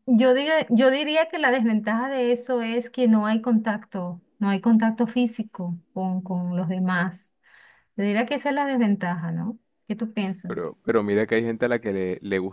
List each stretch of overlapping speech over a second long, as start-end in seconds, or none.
none